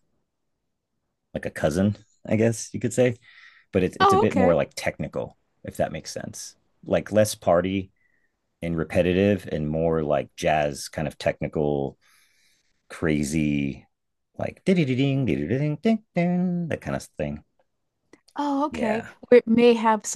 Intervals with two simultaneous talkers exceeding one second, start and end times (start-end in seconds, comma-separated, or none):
none